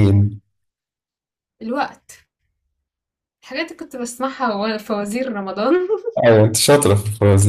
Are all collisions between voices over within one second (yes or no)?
yes